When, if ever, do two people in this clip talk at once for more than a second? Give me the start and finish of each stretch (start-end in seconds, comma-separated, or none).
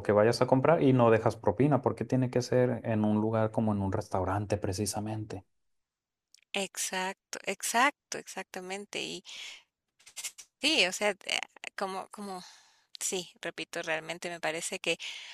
none